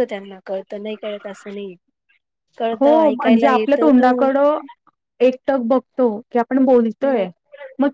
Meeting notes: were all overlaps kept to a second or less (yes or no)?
no